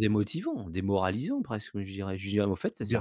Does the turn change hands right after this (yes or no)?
yes